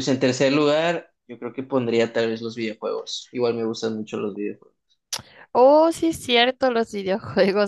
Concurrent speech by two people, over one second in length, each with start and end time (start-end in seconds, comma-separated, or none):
none